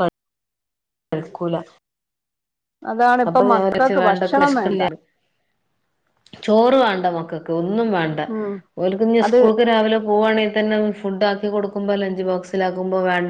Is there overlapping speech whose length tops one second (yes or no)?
yes